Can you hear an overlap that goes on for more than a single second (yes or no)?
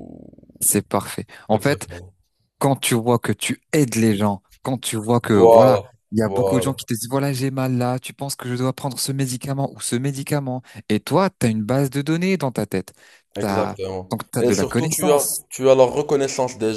yes